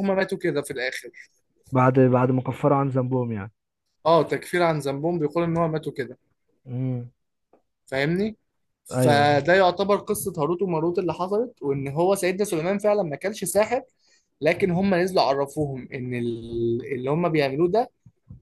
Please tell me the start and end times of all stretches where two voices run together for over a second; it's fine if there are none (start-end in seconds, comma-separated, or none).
none